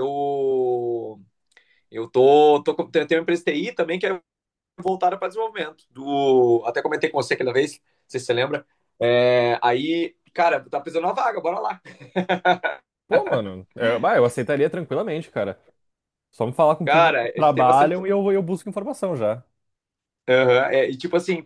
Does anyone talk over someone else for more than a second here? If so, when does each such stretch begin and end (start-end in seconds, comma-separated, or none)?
16.8-18.1